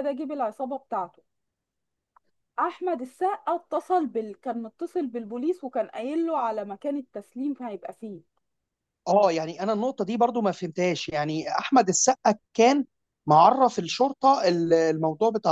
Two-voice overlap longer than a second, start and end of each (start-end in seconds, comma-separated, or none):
none